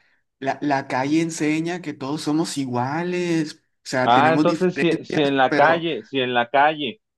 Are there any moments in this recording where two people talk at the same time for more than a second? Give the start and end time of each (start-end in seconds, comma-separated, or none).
4.0-5.8